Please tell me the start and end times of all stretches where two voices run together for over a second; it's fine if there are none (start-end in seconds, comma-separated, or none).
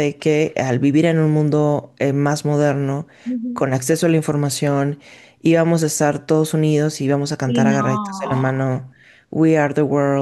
7.5-8.7